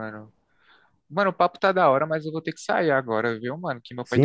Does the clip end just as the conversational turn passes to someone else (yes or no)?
yes